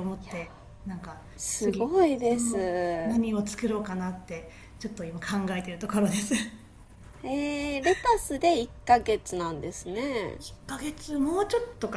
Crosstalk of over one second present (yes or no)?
yes